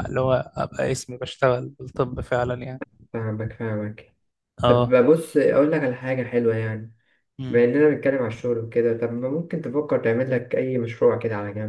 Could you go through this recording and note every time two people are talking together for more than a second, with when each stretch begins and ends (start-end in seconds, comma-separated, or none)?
none